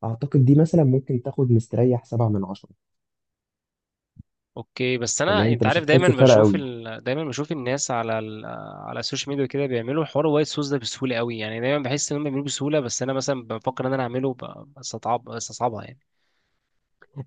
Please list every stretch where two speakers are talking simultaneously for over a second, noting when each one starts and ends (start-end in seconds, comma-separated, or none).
5.3-6.6